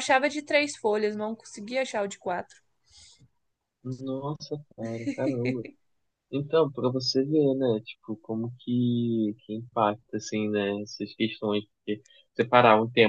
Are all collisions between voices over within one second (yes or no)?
yes